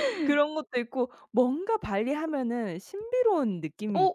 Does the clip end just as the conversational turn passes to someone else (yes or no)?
yes